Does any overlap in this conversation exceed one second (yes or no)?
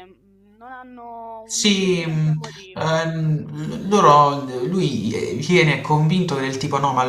yes